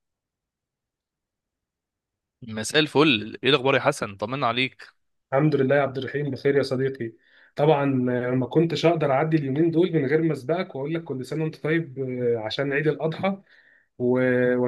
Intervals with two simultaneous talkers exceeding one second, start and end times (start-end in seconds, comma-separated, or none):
none